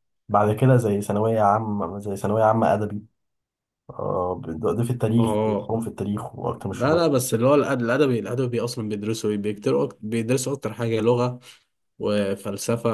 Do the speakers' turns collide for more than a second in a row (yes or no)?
no